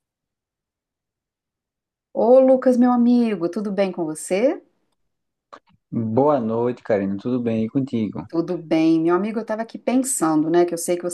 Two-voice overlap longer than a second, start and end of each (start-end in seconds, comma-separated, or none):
none